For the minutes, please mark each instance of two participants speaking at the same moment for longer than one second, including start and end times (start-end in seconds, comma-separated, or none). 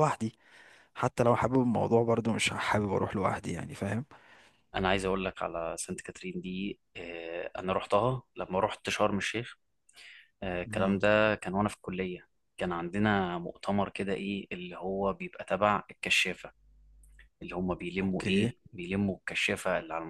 none